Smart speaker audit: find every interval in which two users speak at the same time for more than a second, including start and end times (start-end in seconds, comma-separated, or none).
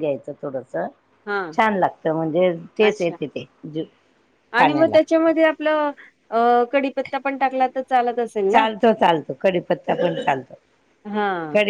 none